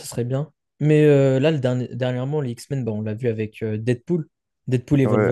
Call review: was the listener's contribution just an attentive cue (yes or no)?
no